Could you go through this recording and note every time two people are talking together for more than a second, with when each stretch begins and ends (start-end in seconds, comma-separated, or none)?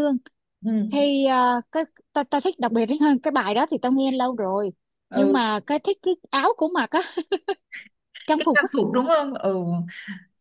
none